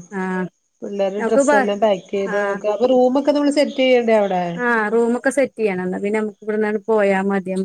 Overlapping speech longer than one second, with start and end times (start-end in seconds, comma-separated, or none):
none